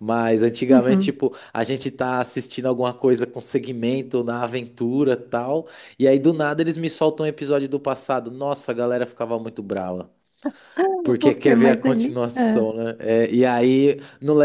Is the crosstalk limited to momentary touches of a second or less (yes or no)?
no